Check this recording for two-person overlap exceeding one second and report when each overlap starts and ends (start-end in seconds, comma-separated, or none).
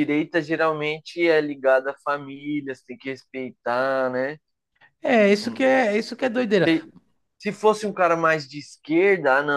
none